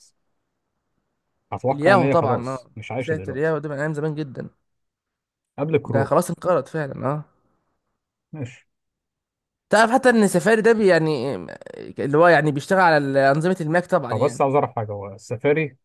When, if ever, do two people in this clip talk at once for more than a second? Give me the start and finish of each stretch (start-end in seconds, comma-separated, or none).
1.7-3.6